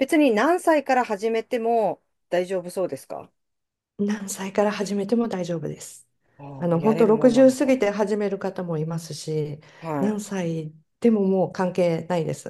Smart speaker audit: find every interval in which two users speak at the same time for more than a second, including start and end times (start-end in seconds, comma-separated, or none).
6.6-7.8